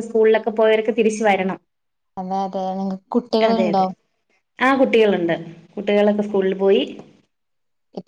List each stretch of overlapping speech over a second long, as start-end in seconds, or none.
none